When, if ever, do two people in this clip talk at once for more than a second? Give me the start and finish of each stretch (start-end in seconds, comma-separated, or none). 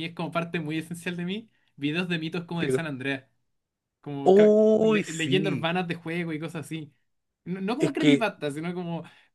4.2-5.7